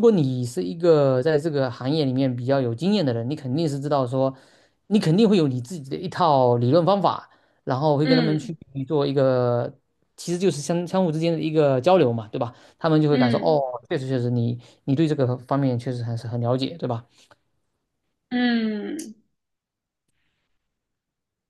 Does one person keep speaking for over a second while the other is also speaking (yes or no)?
no